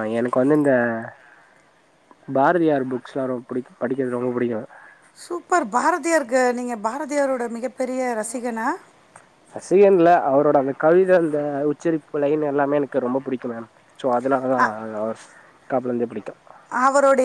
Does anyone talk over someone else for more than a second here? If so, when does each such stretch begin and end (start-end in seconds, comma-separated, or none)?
none